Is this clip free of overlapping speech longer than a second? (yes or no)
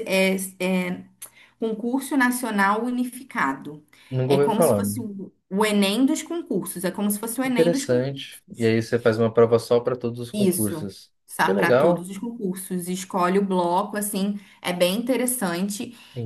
no